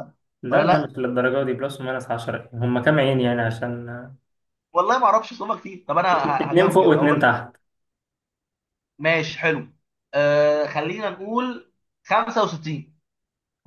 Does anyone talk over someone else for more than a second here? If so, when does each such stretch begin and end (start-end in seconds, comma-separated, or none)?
6.1-7.4